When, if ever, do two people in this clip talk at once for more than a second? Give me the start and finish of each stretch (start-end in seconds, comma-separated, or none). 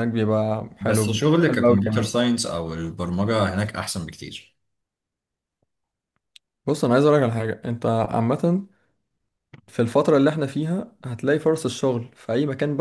0.8-2.1